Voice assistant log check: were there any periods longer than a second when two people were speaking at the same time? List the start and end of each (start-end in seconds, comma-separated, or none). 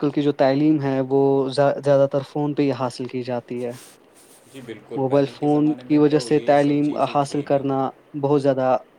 5.0-7.8